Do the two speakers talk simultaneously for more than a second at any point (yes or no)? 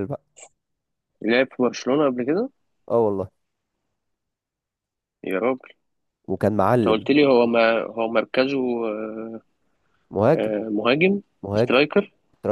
no